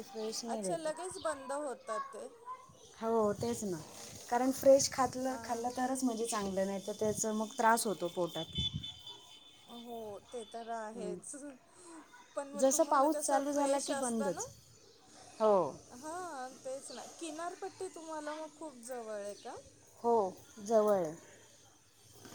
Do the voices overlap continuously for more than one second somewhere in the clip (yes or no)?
yes